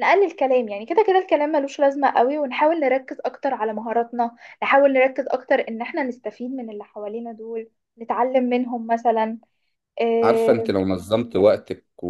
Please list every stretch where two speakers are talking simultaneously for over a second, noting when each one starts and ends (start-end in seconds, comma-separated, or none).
none